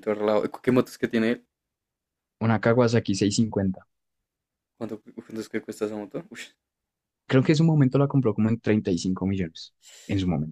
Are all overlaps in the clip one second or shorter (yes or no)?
yes